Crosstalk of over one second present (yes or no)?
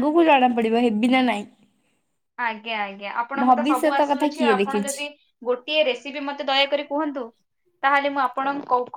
yes